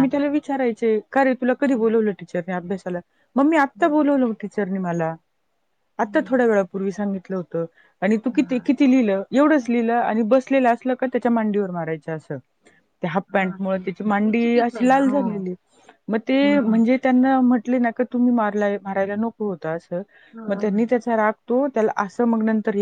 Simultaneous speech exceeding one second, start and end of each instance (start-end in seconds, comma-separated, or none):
13.3-15.1